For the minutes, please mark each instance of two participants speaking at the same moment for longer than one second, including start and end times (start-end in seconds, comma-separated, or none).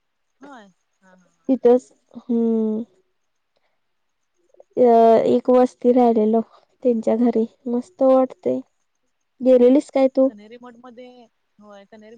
none